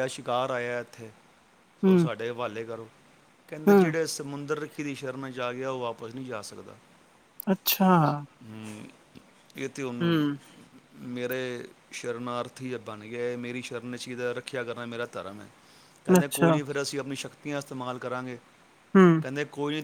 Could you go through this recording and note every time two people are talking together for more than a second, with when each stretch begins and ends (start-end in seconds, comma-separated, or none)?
none